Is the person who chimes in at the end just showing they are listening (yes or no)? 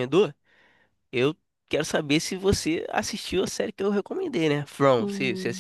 no